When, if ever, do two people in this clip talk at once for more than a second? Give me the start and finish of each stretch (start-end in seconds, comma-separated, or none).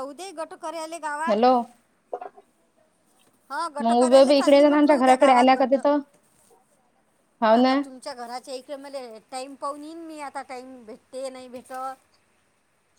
3.8-5.8